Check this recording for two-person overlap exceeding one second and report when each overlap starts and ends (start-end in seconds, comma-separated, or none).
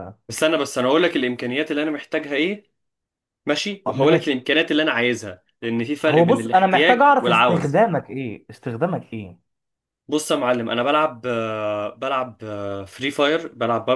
6.1-7.8